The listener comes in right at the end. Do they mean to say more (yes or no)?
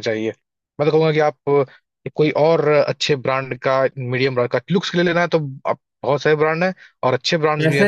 yes